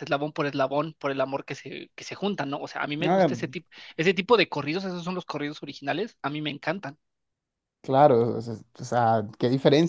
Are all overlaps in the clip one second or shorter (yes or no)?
yes